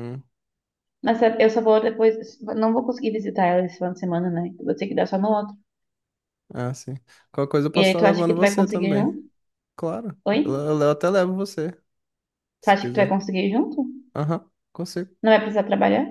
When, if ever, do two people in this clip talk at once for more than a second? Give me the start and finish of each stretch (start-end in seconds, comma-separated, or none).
7.8-9.1